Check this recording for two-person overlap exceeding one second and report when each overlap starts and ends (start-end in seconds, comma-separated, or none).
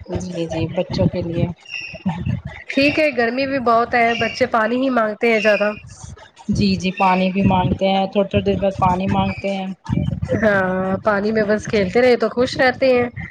none